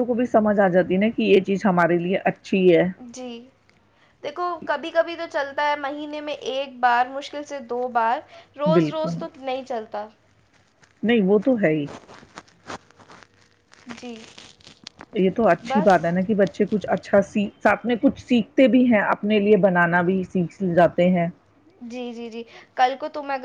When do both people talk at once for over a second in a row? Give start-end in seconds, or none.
none